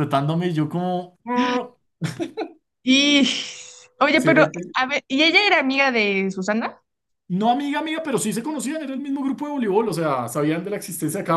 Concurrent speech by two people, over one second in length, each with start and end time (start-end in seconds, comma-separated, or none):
none